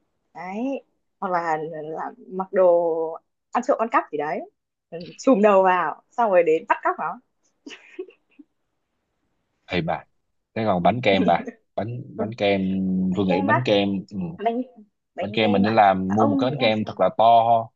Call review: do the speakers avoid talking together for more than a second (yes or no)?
no